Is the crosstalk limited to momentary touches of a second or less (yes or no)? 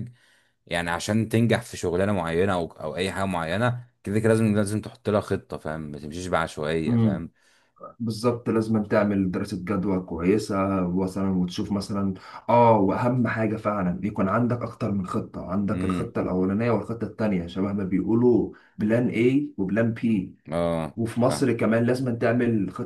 yes